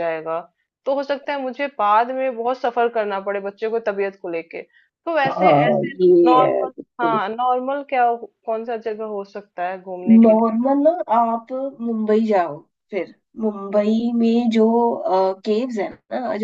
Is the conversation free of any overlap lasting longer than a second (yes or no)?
no